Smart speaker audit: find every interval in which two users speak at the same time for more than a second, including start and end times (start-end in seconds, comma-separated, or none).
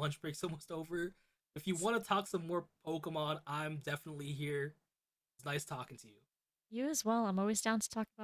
none